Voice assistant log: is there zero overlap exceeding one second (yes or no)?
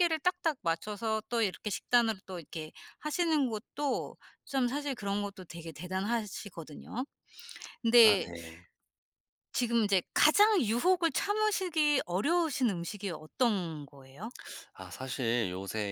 yes